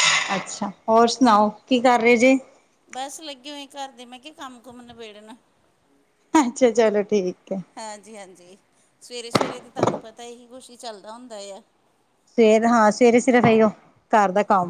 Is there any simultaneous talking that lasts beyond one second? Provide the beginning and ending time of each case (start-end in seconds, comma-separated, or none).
none